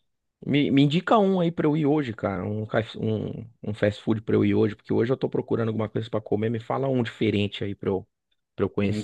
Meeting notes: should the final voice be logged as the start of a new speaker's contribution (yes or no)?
yes